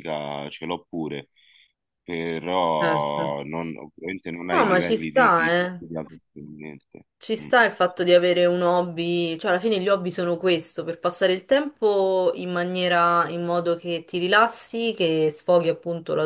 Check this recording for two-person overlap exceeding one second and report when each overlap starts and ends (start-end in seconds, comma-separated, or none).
4.5-5.8